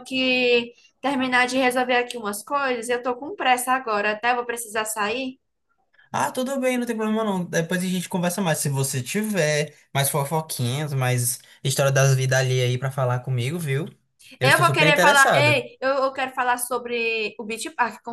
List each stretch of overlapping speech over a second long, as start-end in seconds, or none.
14.4-15.6